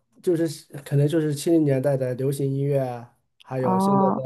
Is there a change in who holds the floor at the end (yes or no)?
no